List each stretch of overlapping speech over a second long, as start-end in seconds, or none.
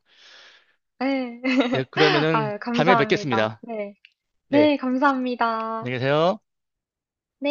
2.3-3.6